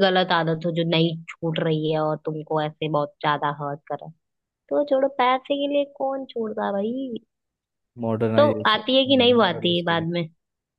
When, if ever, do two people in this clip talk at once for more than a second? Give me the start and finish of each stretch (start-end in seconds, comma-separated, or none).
8.4-10.1